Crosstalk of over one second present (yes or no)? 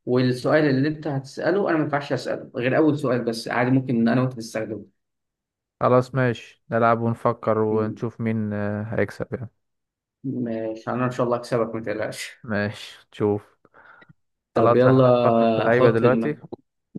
yes